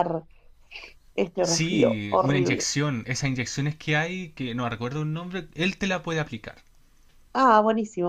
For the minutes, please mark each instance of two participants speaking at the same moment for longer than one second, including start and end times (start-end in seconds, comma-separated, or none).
1.4-2.7